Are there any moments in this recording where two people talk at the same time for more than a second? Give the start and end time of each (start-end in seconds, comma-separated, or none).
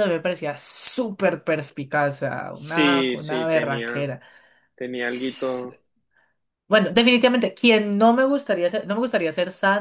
2.5-4.1